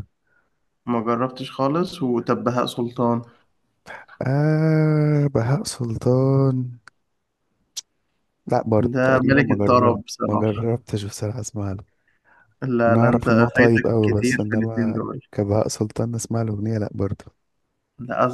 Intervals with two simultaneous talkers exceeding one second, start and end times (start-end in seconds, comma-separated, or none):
8.9-10.4, 12.9-15.2